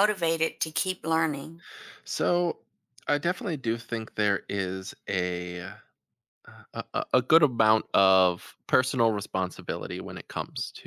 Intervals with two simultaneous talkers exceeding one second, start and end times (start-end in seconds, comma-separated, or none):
none